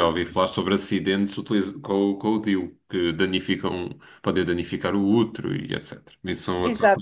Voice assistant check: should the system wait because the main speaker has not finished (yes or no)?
no